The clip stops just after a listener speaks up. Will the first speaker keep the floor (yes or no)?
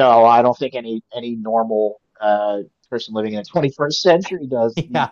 no